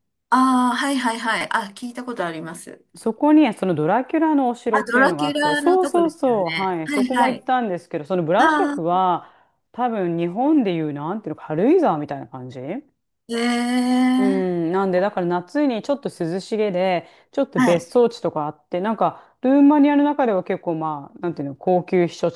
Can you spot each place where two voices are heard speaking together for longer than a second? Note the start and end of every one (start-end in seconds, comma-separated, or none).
4.7-7.5